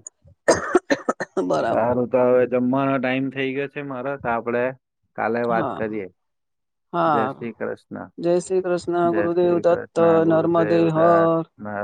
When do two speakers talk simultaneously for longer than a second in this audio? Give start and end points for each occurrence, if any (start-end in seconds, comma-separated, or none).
9.1-11.3